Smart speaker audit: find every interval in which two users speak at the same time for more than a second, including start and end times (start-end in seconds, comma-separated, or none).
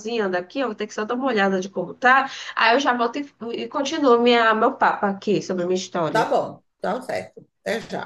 none